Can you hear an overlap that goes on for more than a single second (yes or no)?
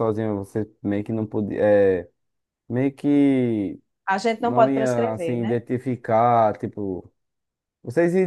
yes